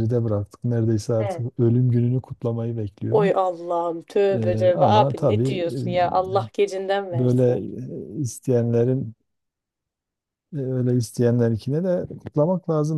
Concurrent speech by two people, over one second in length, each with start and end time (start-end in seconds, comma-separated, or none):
4.3-5.8